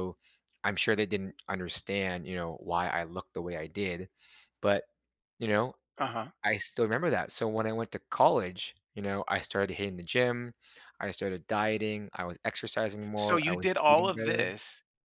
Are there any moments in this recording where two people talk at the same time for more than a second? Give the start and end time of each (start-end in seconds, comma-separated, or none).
13.2-14.5